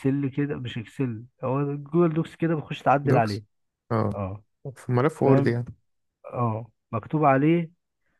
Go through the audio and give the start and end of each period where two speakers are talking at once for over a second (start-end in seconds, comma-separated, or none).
none